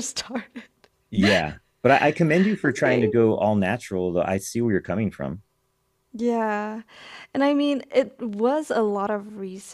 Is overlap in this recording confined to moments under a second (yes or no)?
yes